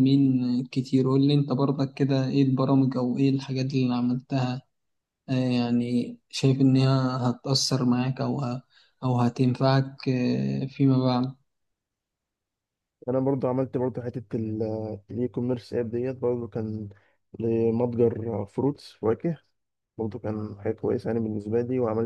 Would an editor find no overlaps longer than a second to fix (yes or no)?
yes